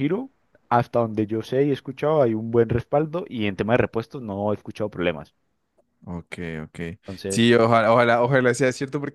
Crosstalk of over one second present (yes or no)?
no